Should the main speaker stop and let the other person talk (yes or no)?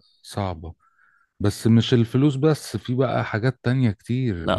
yes